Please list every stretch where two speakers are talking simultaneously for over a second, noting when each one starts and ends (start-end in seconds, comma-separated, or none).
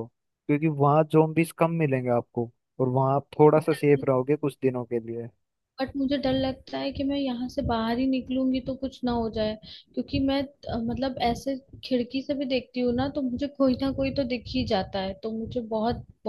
none